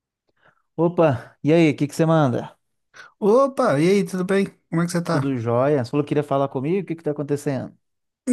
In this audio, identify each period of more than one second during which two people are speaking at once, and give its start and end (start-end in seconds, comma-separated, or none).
none